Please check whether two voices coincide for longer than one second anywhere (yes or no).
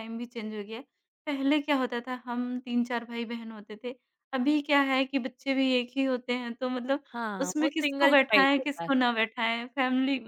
yes